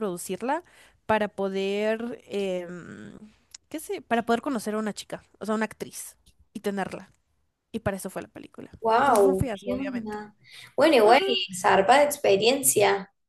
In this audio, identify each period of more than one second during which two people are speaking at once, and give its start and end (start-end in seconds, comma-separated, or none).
8.8-10.2